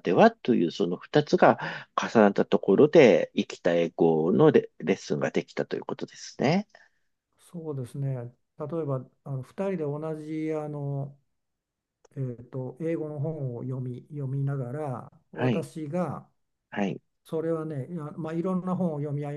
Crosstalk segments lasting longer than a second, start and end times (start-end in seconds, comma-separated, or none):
none